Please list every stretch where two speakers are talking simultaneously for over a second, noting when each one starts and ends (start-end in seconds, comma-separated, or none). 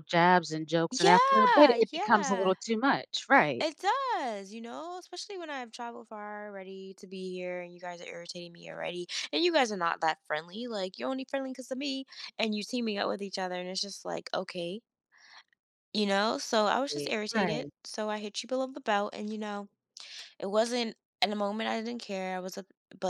0.9-2.5